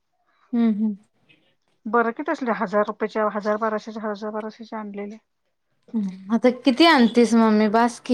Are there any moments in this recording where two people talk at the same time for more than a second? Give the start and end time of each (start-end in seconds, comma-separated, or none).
none